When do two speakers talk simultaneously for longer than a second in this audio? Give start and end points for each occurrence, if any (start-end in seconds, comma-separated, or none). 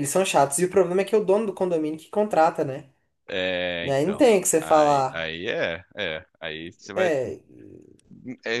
3.8-5.3